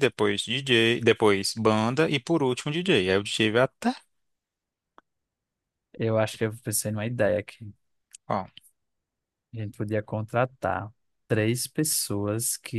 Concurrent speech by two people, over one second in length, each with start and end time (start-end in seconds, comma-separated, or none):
none